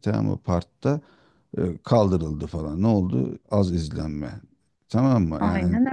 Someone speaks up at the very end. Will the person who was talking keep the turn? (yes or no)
yes